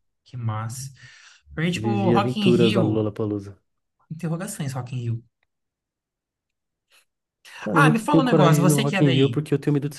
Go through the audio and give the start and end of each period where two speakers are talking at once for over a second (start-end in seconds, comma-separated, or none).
1.8-3.1, 7.7-9.4